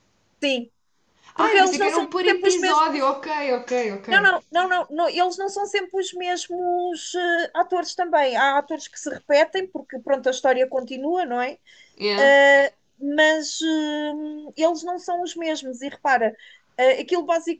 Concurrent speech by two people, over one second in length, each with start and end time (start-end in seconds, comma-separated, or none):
1.4-3.1